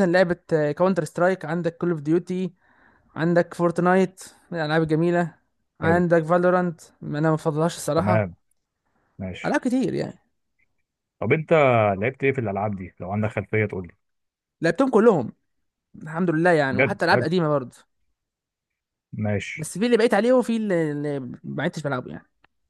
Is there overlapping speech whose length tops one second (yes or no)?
no